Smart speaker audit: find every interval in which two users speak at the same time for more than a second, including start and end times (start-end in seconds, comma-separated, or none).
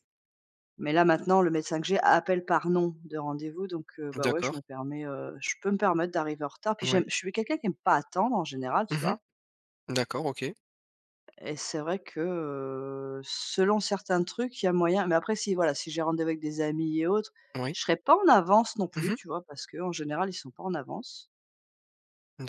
none